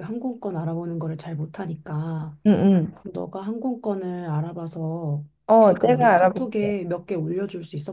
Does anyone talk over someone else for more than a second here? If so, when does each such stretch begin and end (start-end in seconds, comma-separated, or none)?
5.5-6.7